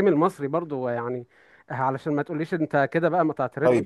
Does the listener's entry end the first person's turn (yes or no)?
yes